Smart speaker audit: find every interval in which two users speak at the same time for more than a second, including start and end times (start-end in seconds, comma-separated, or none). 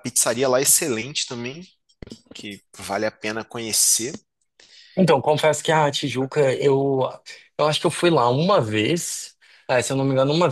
none